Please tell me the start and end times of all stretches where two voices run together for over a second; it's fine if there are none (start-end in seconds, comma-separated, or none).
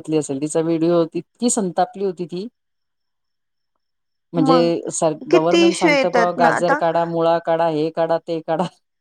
5.3-6.8